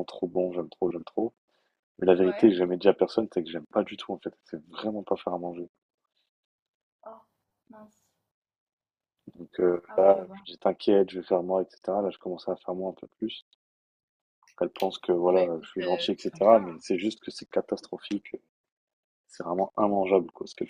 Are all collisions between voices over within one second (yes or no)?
no